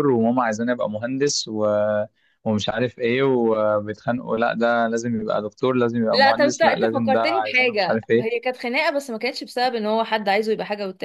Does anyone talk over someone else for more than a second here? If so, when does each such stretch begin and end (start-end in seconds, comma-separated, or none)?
6.1-8.3